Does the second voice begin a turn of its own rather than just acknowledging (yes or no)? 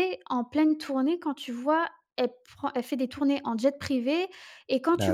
no